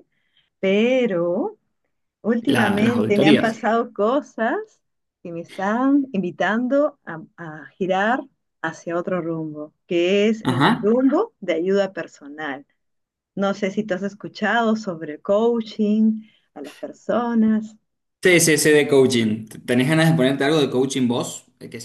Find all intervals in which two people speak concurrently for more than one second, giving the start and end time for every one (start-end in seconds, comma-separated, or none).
2.4-3.6